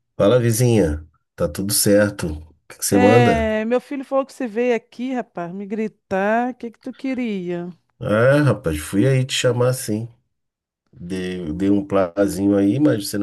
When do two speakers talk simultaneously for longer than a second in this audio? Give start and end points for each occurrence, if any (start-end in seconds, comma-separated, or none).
none